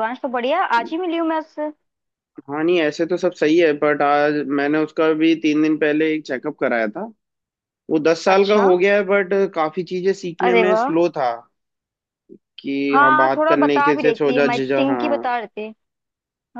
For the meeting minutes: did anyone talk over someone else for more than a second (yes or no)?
yes